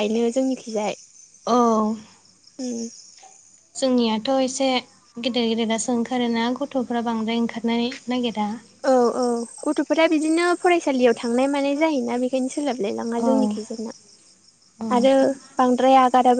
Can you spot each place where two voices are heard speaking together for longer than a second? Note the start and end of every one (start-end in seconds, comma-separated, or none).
none